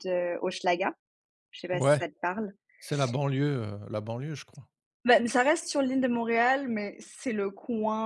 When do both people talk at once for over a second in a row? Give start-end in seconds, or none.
none